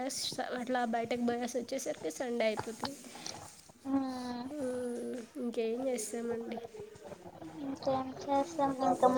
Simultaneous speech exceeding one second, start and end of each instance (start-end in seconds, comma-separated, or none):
none